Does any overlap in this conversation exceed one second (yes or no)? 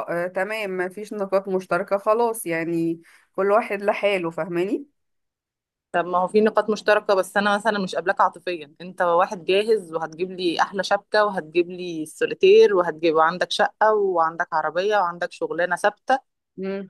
no